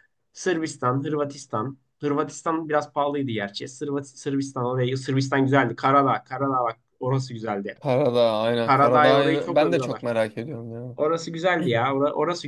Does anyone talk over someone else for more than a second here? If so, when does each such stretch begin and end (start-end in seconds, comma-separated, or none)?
8.6-10.1